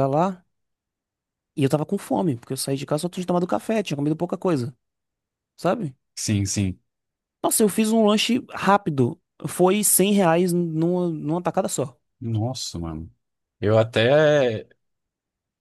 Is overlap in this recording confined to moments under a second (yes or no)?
yes